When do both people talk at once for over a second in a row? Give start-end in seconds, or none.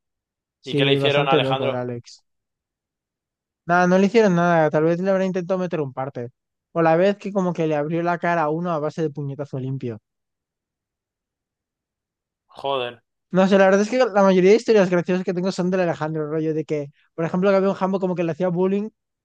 0.6-1.9